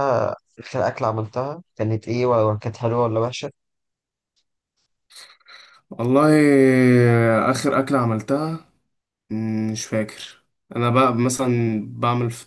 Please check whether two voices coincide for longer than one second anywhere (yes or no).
no